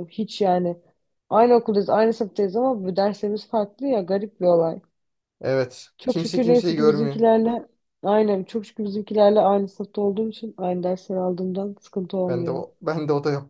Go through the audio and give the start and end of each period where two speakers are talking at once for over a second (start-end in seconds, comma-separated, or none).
6.0-7.2